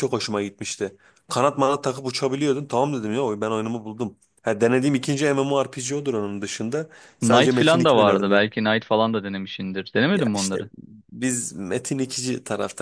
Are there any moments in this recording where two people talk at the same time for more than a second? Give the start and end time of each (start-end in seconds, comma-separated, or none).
7.2-8.4